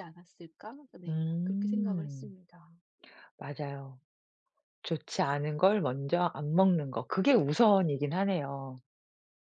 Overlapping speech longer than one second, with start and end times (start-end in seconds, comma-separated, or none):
1.1-2.3